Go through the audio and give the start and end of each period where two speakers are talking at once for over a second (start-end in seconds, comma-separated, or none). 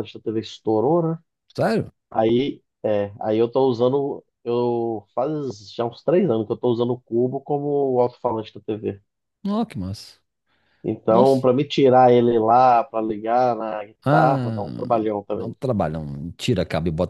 none